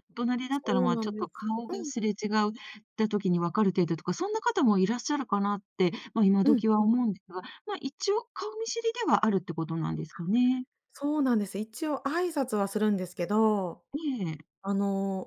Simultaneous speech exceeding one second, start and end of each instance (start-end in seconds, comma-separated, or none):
0.5-1.9